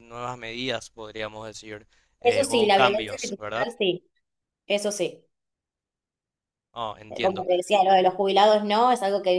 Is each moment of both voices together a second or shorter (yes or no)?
no